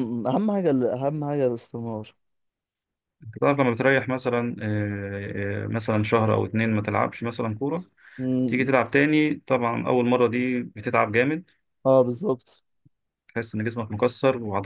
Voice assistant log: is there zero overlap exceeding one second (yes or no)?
yes